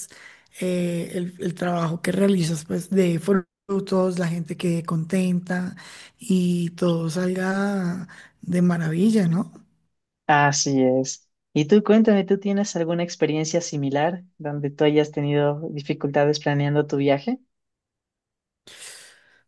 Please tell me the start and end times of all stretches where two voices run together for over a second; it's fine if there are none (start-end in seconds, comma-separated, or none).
none